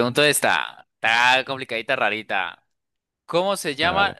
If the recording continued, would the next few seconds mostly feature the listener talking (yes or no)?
no